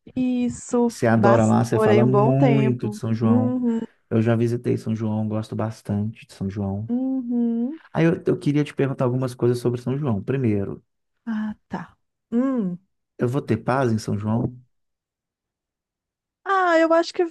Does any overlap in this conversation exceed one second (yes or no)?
yes